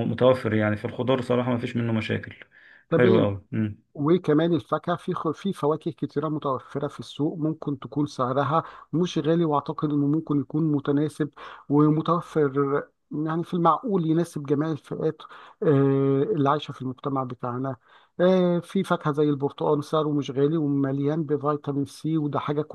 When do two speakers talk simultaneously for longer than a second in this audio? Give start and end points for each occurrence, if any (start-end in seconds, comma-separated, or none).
none